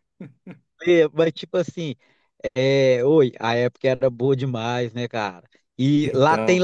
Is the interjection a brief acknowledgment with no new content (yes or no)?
yes